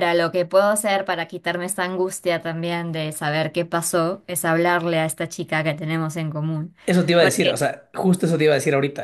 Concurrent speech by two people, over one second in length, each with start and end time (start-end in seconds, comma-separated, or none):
none